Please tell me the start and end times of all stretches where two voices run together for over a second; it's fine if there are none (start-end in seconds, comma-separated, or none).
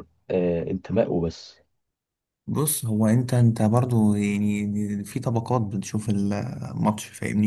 none